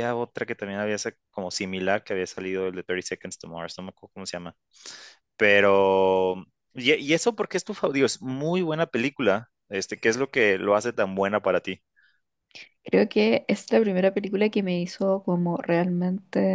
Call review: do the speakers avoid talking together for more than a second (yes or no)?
yes